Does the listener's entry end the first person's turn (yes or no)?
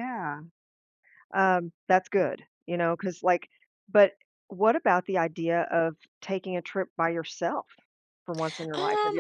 yes